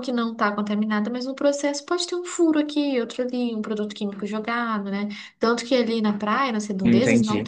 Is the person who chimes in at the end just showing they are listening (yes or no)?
yes